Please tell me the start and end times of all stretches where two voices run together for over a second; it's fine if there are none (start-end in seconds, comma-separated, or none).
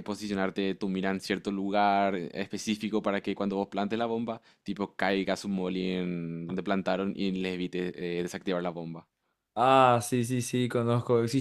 none